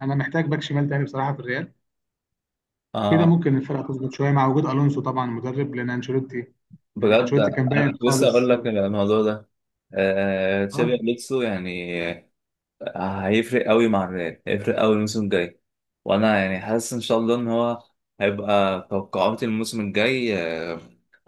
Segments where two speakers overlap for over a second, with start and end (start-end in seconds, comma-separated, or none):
7.0-8.5